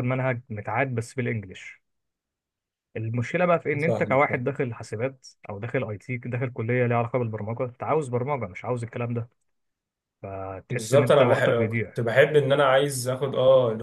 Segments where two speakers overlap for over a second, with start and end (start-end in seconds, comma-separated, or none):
10.7-12.0